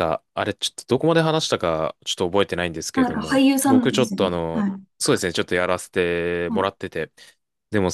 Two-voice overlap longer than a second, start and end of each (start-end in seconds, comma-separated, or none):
2.9-4.8